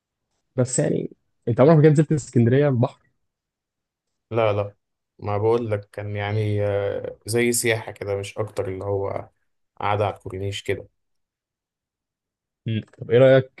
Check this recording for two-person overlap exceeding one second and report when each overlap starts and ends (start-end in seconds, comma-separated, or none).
none